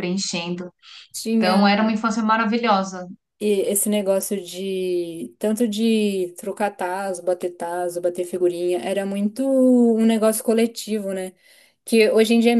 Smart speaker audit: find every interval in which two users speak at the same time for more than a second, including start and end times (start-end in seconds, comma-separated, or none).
none